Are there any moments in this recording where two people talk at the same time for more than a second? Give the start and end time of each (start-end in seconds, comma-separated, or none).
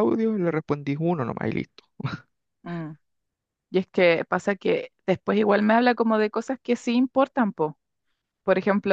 none